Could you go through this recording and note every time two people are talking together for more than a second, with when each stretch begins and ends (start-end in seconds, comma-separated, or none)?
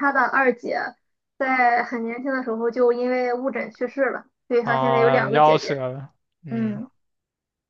4.6-5.8